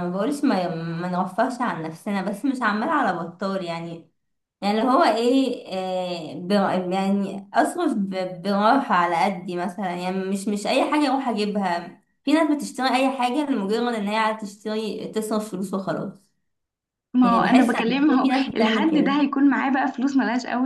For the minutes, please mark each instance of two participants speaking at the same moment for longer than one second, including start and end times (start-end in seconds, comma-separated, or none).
17.2-19.2